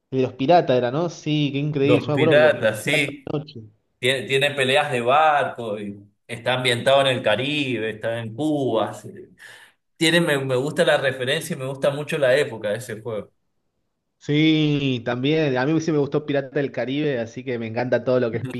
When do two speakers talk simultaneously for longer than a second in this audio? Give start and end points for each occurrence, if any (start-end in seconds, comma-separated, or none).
1.8-3.3